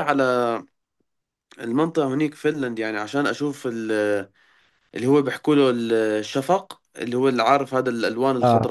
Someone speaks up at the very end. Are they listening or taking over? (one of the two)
taking over